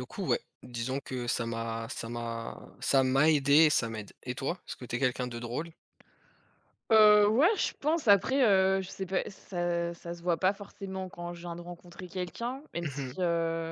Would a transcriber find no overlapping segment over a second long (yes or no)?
yes